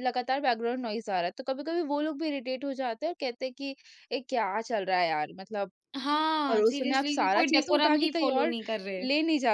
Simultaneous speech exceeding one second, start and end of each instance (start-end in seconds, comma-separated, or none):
6.5-8.5